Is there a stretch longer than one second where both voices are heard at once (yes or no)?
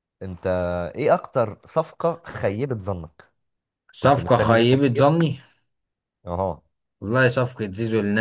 yes